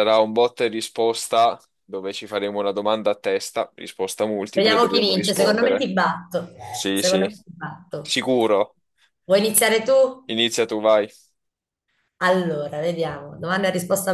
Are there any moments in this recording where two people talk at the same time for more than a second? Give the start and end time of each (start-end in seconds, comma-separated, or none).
4.5-5.9